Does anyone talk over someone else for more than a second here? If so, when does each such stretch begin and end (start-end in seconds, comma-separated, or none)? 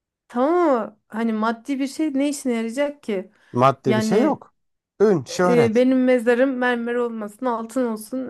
none